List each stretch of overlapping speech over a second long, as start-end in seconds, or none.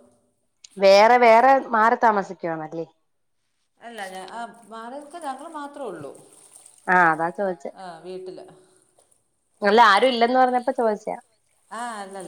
none